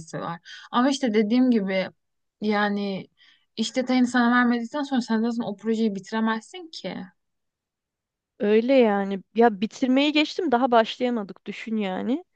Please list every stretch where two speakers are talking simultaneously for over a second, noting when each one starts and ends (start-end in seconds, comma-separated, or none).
none